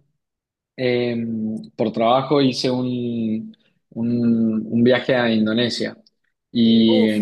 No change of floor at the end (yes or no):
yes